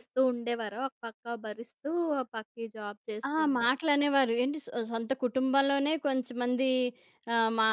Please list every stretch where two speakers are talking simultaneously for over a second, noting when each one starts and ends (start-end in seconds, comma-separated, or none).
none